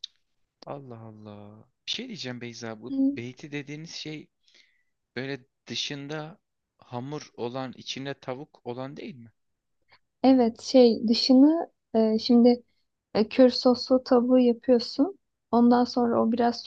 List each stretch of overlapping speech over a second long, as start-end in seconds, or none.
none